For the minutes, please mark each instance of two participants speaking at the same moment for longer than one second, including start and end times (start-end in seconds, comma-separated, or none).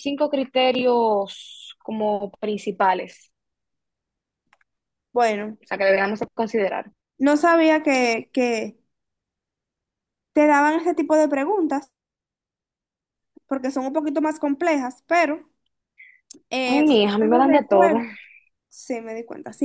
16.7-18.0